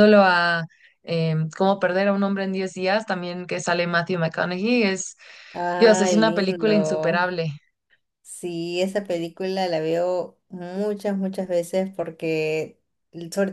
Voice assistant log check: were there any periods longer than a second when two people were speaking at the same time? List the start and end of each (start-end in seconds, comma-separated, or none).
5.8-7.4